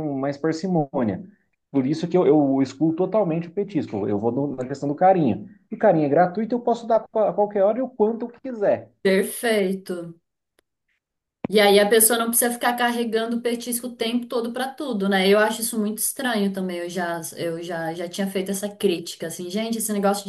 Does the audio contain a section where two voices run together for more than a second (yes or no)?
no